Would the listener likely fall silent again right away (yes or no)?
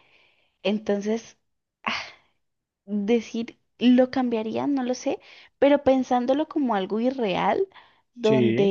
yes